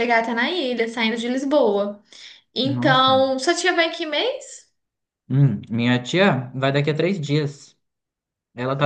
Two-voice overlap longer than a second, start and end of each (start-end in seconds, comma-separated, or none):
none